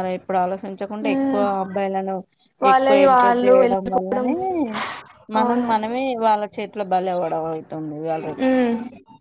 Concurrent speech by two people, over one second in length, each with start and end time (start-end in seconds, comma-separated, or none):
2.7-4.3